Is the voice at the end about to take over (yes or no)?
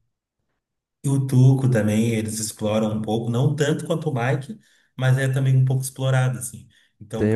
yes